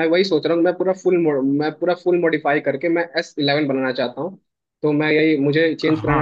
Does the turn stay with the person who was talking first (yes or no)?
yes